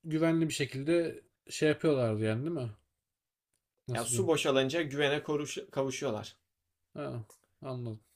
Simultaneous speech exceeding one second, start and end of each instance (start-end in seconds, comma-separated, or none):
none